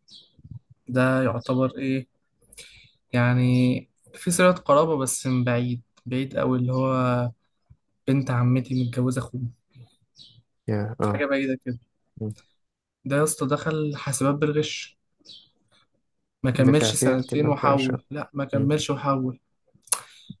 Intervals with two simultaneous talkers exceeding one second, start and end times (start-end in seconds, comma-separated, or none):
16.6-17.9